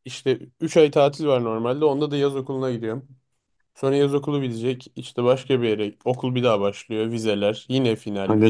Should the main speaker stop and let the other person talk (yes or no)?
yes